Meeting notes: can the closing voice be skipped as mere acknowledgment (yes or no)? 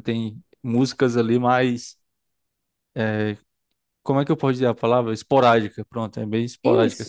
no